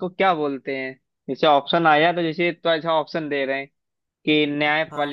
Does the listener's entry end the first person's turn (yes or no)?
no